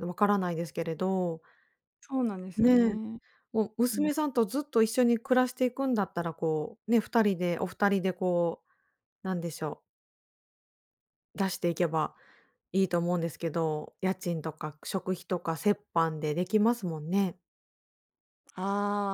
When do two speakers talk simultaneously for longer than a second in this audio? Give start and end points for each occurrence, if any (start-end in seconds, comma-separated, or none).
none